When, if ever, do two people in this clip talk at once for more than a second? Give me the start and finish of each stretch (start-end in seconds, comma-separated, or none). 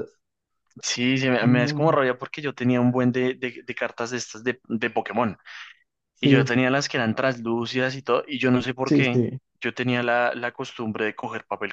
none